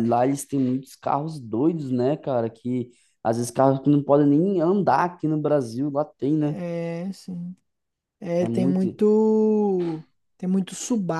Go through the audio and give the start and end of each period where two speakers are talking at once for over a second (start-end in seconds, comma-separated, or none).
none